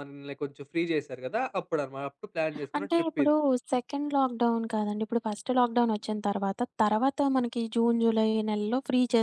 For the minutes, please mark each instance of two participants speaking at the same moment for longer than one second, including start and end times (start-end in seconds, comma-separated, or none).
none